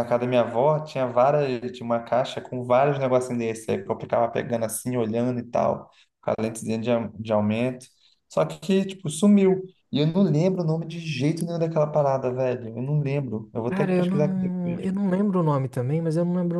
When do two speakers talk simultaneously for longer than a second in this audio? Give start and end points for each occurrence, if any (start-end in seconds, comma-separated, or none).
13.7-14.9